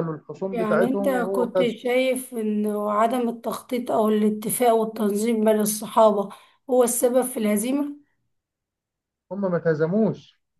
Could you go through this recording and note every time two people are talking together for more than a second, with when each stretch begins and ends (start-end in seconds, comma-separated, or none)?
0.5-1.7